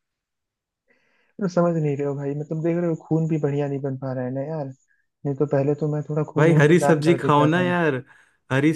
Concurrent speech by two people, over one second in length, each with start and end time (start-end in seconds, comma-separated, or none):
6.4-7.7